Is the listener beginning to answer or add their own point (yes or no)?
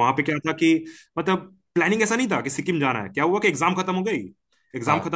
no